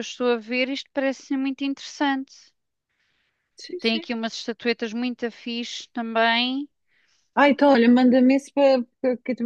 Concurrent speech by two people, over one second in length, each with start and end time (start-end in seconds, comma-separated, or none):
none